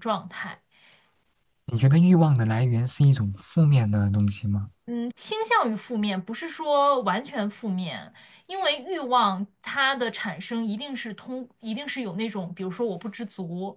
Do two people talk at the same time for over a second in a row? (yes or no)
no